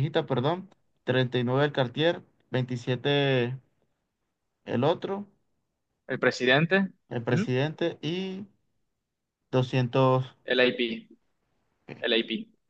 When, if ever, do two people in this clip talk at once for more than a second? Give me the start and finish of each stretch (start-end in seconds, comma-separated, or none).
none